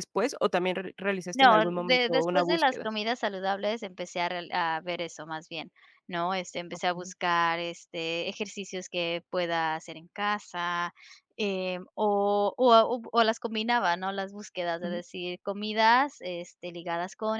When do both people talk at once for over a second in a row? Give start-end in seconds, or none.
1.3-2.9